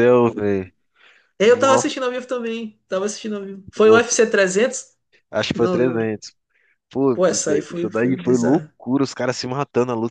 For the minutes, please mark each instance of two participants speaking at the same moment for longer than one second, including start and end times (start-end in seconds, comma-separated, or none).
7.1-8.7